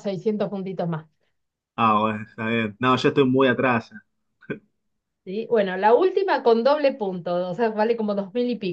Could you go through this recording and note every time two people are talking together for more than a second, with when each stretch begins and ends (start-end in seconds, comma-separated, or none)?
none